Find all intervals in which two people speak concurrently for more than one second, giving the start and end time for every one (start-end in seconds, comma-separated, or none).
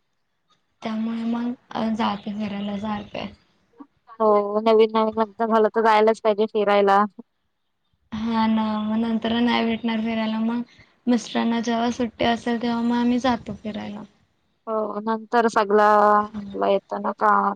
none